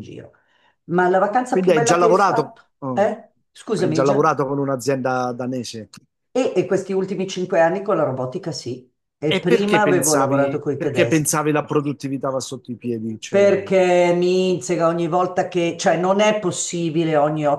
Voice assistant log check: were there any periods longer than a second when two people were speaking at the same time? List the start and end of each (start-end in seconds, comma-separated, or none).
1.5-3.1, 9.3-11.4